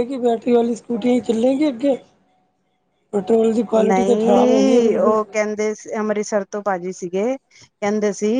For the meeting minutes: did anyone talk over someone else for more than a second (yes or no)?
yes